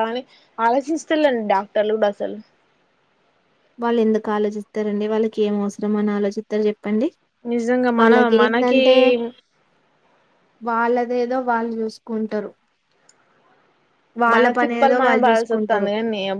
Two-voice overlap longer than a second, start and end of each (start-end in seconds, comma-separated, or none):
14.3-15.9